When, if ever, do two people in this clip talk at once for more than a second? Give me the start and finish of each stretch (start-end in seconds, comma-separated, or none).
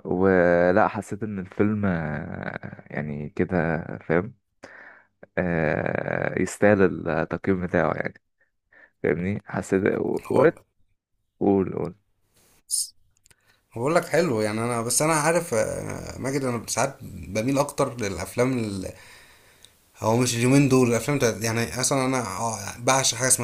none